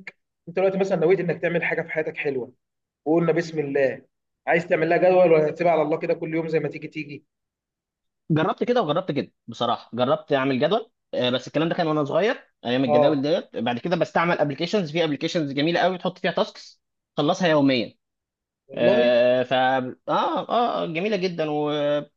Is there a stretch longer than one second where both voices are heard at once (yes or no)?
no